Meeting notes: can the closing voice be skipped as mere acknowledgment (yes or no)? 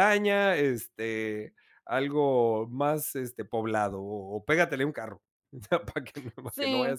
no